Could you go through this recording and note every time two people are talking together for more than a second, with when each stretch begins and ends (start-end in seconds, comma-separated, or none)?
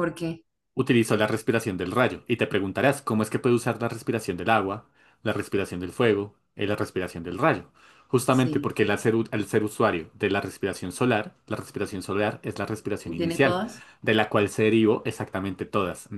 none